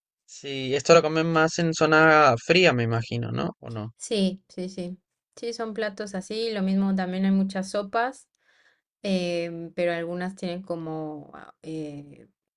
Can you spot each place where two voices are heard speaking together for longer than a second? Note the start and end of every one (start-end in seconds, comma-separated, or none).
none